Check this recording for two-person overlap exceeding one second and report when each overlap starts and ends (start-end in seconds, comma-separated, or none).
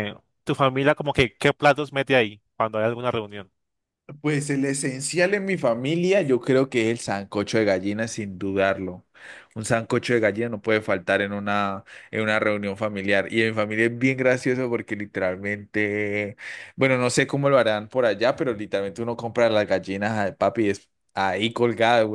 none